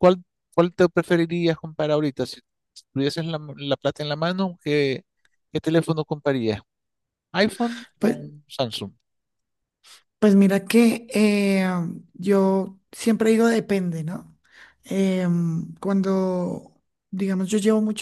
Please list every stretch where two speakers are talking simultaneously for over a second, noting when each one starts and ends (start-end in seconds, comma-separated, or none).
none